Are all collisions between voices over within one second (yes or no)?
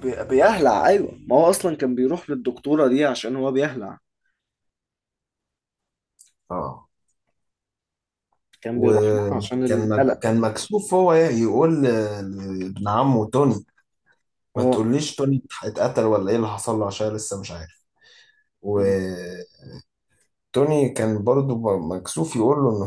no